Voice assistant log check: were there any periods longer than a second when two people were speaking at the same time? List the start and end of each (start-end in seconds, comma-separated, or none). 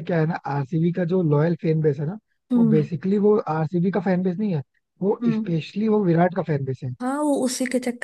none